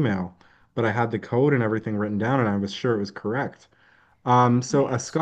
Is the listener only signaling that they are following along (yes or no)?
yes